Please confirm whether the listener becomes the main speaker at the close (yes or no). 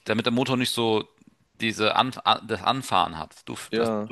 no